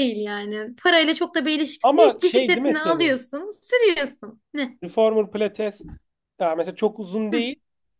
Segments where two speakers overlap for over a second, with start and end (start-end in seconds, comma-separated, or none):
1.8-3.1